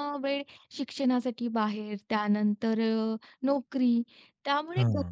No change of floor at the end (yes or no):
yes